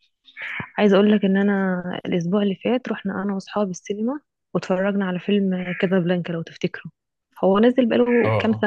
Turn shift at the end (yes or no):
no